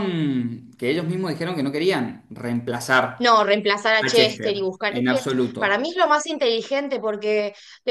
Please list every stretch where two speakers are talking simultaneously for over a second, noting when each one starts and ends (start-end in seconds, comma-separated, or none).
4.0-5.8